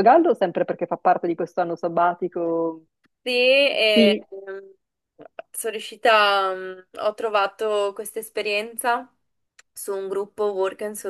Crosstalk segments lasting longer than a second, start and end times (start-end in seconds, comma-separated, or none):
none